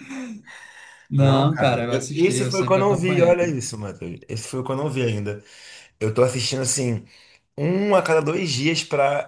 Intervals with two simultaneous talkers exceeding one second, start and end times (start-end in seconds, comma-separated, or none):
1.2-3.6